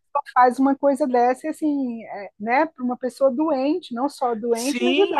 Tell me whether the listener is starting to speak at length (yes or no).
yes